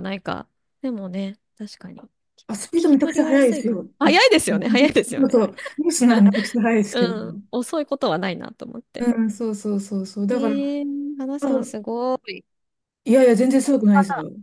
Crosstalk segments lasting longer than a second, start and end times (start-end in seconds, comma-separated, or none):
2.8-4.3